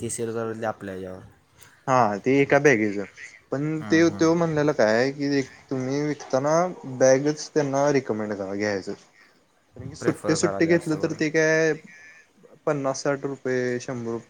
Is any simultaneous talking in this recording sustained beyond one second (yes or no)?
yes